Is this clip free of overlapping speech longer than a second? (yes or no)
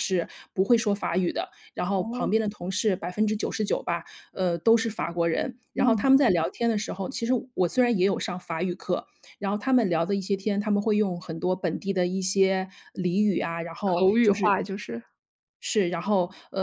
yes